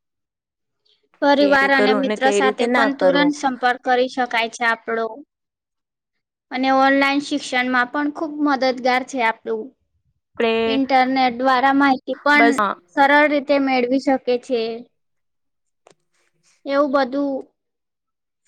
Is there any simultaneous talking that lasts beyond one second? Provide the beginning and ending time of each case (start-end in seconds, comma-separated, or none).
1.4-3.3